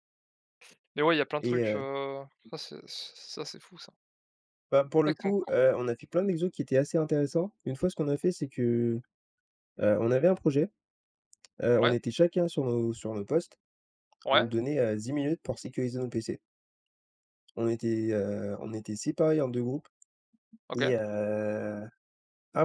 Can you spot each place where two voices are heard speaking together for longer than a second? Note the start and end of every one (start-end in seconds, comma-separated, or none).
none